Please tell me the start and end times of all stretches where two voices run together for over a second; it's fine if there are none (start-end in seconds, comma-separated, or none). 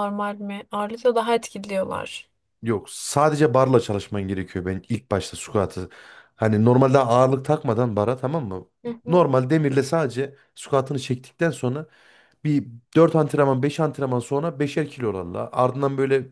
none